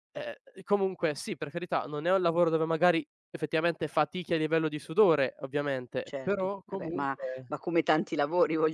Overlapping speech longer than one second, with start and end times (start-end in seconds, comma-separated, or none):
6.0-7.5